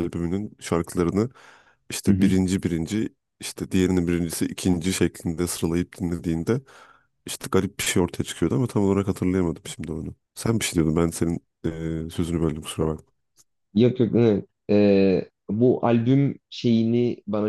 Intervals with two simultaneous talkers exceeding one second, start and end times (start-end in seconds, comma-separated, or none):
none